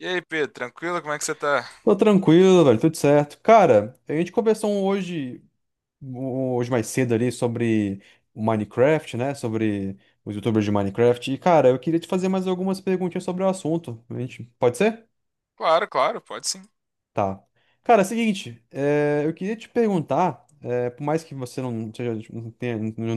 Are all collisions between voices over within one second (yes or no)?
yes